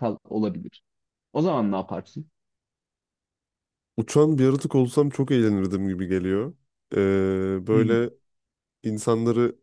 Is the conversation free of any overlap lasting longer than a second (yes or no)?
yes